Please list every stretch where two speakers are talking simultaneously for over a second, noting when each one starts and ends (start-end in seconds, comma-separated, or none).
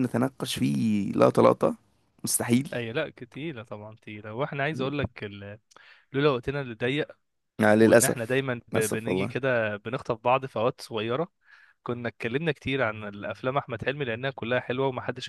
7.8-9.4